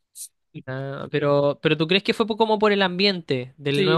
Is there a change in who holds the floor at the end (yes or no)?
yes